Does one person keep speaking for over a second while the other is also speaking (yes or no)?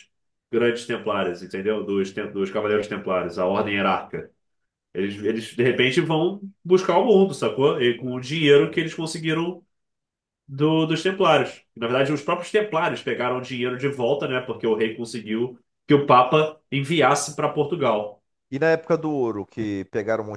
no